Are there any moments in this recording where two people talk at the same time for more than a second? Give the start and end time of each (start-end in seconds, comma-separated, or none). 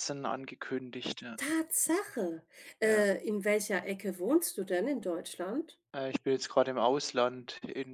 none